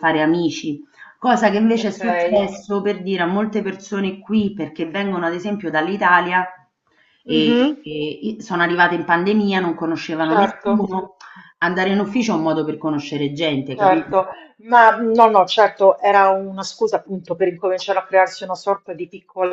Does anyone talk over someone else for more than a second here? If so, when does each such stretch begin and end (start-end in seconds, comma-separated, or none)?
none